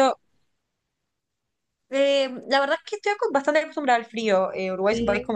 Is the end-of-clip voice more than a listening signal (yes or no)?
no